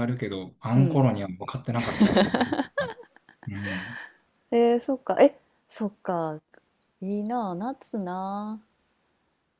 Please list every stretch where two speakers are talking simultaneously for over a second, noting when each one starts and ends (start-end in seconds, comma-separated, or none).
none